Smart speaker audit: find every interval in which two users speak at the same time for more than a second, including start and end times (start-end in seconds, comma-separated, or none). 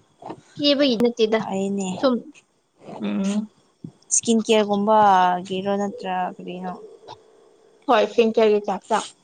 none